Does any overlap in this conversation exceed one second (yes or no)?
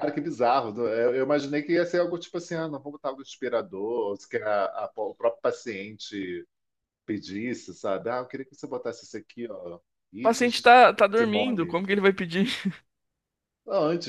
yes